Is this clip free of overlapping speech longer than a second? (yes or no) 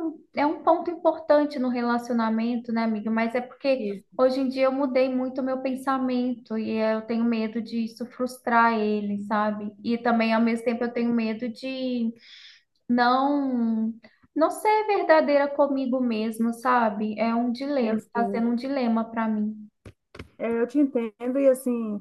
yes